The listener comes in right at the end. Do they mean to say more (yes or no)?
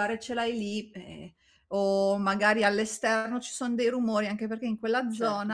no